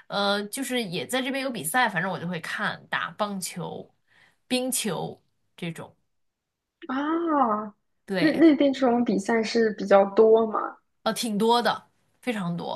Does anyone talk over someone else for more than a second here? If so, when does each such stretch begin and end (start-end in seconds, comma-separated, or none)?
none